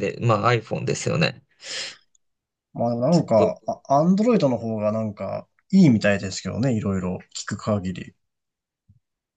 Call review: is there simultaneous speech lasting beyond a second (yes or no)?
no